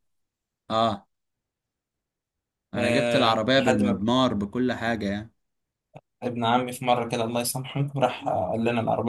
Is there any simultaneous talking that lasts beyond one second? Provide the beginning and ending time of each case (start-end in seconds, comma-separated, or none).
2.8-4.0